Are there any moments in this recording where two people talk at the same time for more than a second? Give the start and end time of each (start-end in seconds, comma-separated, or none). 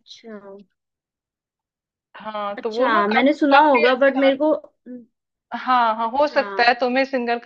2.6-4.3